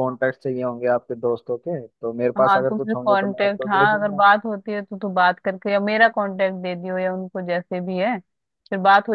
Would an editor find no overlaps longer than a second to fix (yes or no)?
no